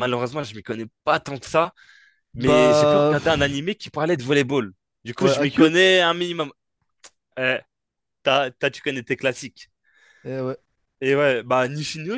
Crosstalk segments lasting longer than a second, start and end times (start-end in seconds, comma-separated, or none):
2.4-3.6